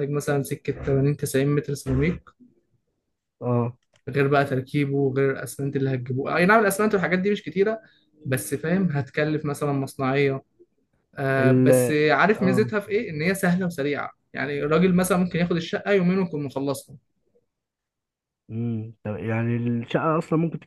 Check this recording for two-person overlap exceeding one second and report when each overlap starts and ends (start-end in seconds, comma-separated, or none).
none